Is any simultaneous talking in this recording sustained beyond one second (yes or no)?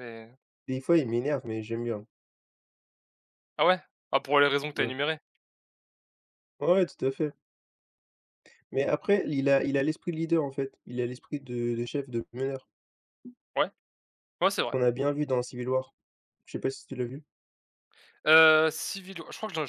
no